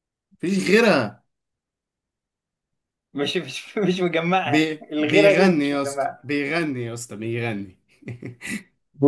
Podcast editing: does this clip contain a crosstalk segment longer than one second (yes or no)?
yes